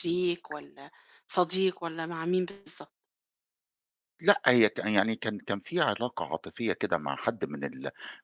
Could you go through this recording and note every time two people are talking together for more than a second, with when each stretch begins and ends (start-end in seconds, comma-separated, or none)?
none